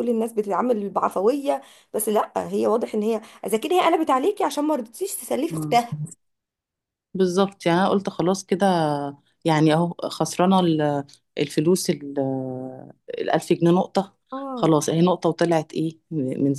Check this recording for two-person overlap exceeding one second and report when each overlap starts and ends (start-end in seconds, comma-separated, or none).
none